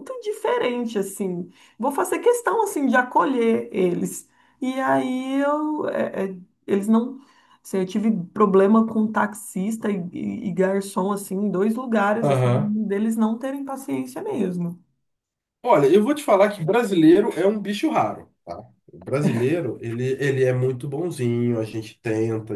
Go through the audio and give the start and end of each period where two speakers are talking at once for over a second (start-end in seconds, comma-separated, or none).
none